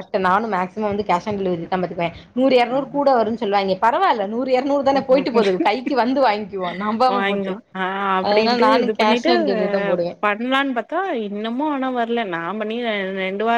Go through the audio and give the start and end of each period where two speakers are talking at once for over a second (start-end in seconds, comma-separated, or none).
none